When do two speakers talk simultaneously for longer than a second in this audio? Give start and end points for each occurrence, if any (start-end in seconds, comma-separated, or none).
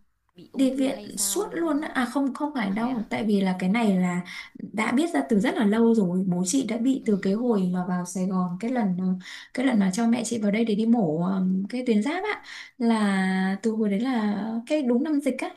0.5-1.9